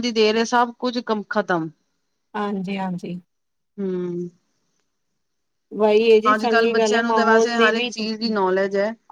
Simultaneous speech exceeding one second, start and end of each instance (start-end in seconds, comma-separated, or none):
6.5-7.9